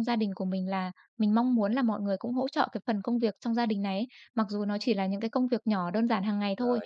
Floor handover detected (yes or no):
no